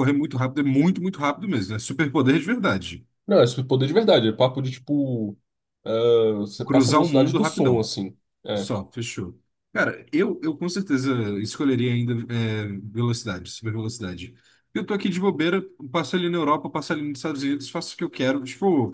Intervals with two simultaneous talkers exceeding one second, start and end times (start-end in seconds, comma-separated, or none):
6.6-7.9